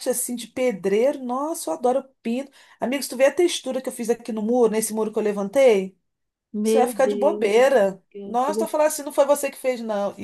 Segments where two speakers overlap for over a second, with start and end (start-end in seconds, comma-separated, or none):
6.6-8.8